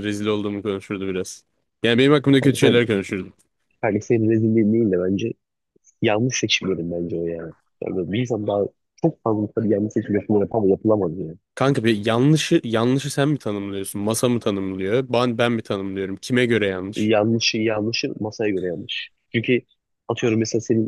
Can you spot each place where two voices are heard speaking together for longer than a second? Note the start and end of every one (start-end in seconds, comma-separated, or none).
none